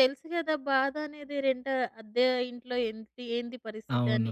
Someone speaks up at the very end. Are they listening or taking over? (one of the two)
listening